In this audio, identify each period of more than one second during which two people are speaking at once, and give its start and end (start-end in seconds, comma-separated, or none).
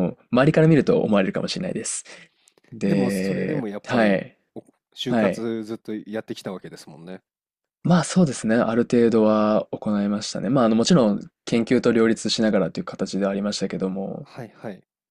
2.8-4.4